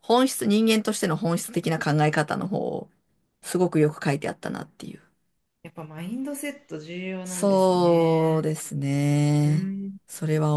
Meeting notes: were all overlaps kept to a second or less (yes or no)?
no